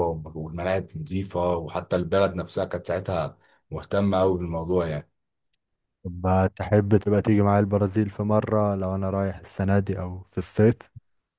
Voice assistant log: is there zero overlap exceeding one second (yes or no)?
yes